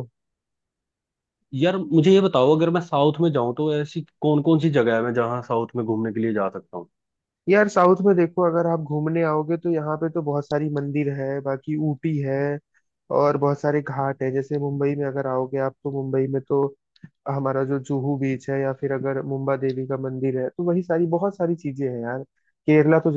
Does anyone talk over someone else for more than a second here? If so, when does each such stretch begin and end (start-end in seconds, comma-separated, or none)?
none